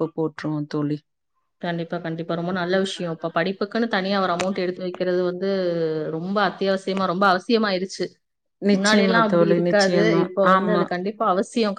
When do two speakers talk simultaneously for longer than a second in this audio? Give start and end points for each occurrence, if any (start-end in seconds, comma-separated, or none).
8.8-10.8